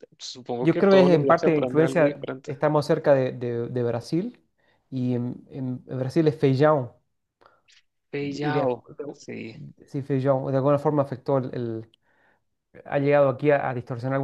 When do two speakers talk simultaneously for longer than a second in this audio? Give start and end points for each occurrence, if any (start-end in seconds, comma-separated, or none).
0.6-2.6